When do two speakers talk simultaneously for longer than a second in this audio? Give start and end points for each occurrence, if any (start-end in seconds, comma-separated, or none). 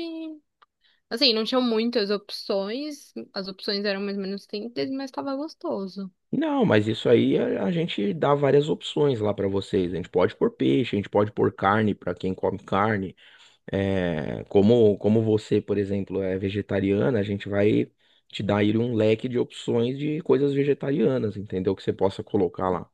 none